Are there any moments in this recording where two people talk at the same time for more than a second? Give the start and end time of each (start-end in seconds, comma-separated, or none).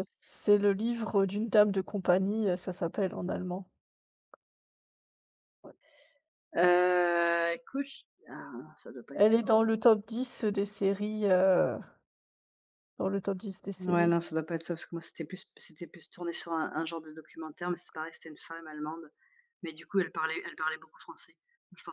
none